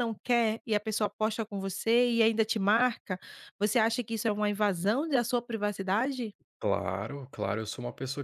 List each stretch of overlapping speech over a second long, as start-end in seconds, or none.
none